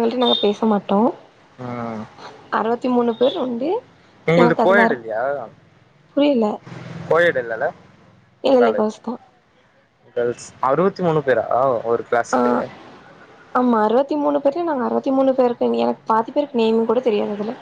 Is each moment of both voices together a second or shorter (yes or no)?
yes